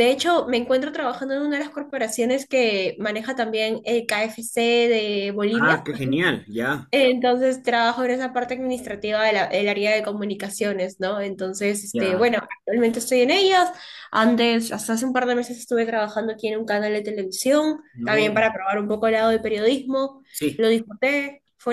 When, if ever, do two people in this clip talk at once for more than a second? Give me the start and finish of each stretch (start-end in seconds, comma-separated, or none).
none